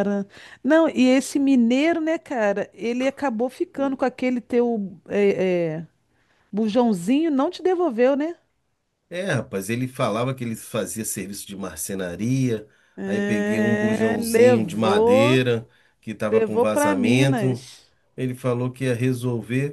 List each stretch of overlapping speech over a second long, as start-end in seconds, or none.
13.0-15.4, 16.3-17.7